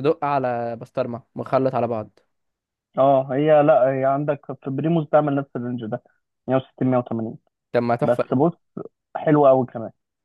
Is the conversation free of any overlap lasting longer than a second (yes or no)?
yes